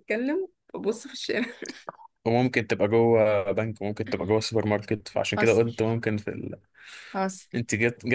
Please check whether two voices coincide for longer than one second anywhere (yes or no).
no